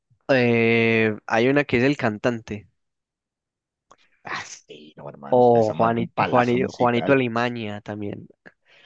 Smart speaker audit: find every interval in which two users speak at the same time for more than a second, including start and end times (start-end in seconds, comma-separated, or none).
5.4-7.2